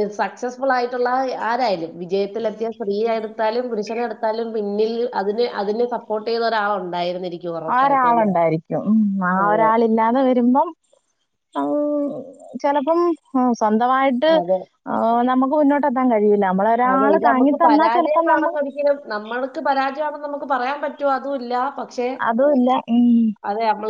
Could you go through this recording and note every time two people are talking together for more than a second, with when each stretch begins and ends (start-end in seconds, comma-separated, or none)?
16.9-18.6